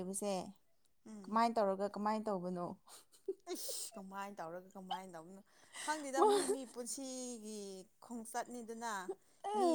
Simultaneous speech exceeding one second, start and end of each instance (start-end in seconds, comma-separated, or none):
none